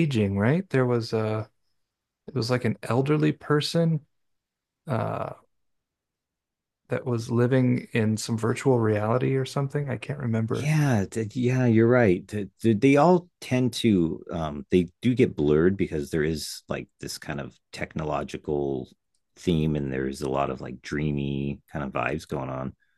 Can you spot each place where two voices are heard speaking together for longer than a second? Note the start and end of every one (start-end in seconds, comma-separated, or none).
none